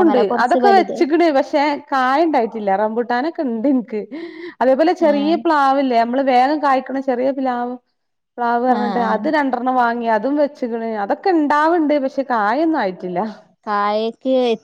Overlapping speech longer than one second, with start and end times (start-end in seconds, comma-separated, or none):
none